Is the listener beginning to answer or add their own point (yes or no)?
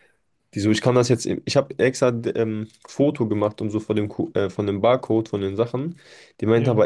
no